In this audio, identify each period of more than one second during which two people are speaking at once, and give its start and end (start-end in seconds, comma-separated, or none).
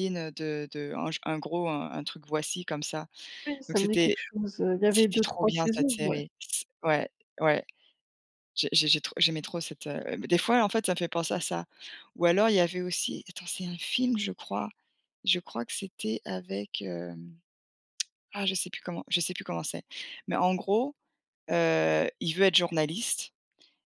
4.9-6.2